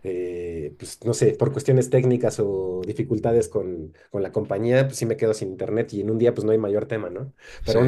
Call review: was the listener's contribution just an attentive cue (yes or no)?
yes